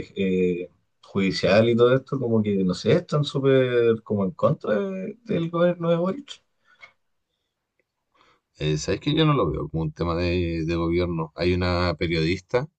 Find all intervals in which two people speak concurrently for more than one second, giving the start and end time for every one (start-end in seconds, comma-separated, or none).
none